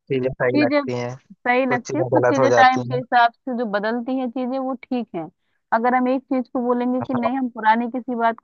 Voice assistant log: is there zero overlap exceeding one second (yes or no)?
no